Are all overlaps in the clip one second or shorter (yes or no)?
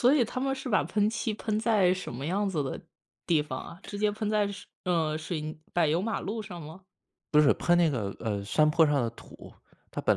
yes